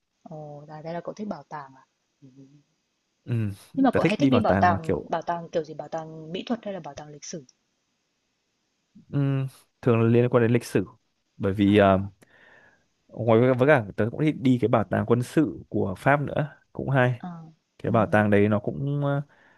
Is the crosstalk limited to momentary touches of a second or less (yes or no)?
no